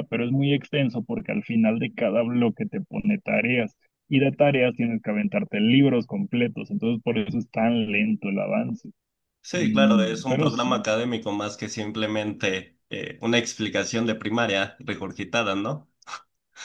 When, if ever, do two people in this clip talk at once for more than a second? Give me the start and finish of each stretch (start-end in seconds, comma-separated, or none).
9.5-10.9